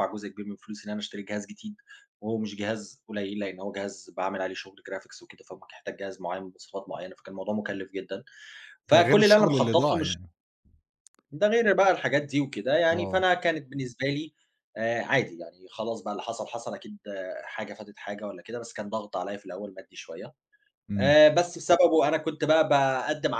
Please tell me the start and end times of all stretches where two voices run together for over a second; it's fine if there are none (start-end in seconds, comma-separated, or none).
8.9-10.2